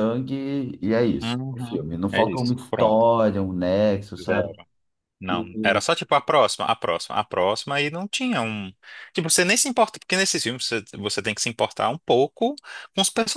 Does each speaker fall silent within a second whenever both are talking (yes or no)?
no